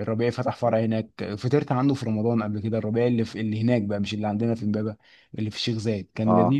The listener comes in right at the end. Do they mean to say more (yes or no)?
no